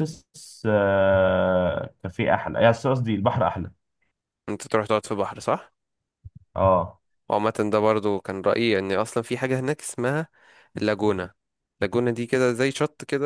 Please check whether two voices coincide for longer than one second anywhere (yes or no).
no